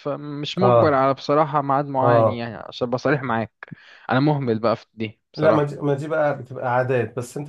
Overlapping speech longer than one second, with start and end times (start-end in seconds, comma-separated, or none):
none